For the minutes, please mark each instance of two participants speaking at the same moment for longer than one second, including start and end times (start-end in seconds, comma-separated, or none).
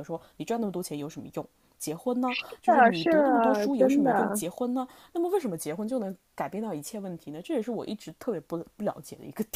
2.5-4.4